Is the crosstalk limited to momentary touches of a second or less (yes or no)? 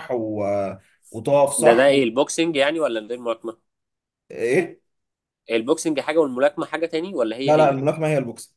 yes